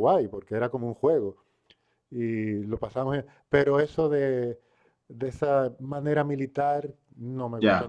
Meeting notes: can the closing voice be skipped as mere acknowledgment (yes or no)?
yes